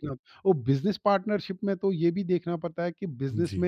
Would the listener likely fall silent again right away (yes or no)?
yes